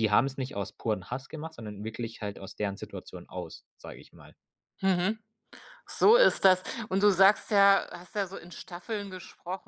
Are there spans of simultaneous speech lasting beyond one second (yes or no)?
no